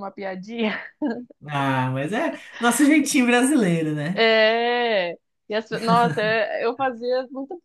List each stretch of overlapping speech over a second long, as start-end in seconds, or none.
none